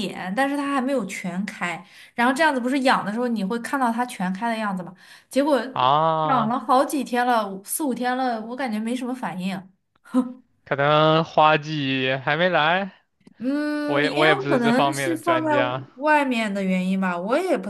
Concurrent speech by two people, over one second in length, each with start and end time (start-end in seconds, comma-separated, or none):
13.8-15.5